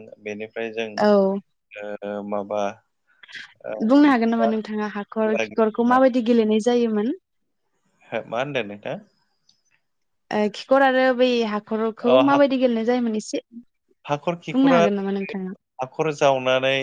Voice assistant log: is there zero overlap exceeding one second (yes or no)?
yes